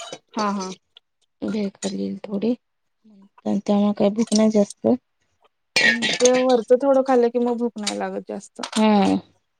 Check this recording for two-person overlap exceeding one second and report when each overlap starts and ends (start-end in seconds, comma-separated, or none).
none